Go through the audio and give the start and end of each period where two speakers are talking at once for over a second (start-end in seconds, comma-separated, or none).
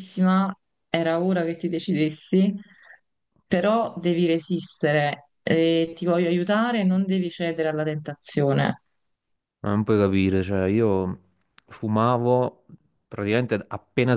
none